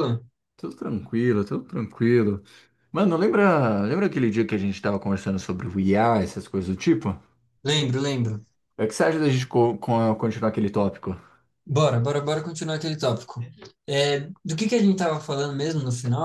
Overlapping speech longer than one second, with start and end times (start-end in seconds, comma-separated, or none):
none